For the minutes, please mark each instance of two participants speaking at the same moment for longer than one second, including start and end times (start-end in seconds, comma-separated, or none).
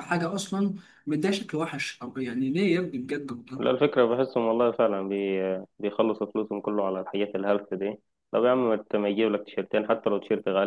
none